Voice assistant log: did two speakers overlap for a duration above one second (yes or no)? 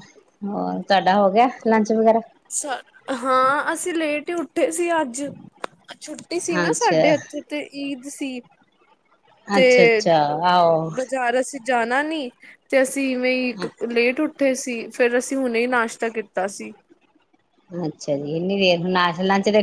no